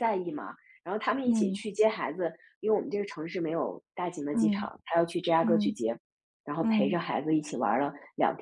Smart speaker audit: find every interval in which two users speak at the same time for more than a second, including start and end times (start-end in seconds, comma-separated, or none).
none